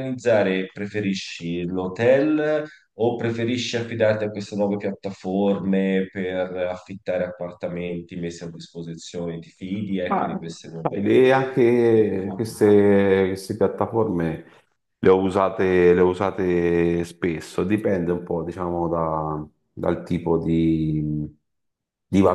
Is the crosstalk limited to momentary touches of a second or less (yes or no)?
yes